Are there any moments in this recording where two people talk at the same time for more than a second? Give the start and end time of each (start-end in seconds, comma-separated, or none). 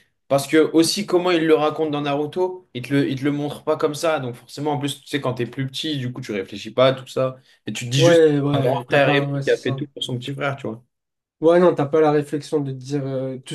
7.9-9.9